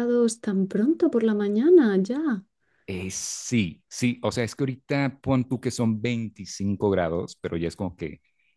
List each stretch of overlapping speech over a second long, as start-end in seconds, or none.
none